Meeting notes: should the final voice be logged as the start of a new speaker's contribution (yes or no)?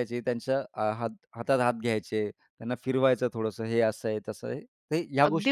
yes